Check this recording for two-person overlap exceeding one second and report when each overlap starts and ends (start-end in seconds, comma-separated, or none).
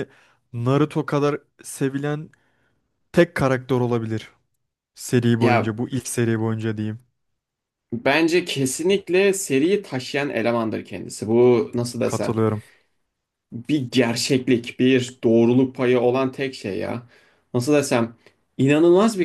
none